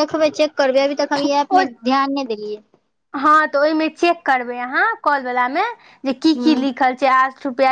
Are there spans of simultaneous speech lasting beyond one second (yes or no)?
no